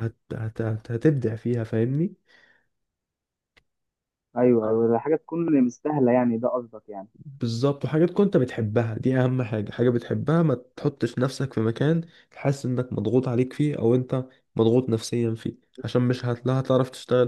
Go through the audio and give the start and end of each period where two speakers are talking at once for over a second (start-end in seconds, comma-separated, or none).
none